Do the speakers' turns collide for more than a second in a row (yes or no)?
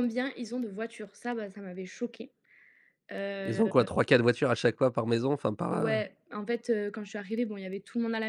no